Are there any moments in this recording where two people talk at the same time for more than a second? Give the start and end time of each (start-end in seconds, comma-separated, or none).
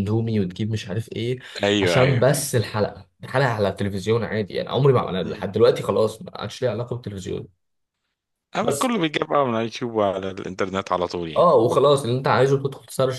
none